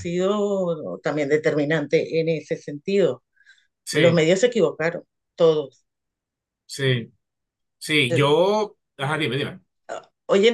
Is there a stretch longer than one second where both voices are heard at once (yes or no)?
no